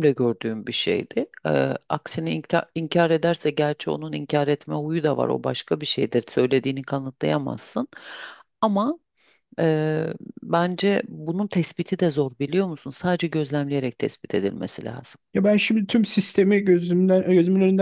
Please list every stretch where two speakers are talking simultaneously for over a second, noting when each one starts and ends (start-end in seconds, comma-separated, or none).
none